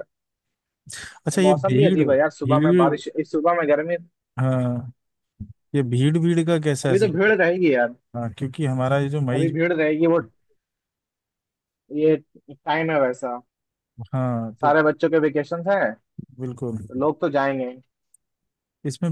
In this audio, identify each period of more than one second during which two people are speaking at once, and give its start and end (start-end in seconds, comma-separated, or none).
1.4-2.9